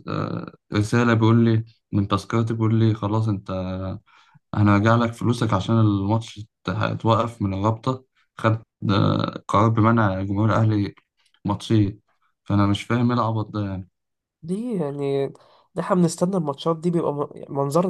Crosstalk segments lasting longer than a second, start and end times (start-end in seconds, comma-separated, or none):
none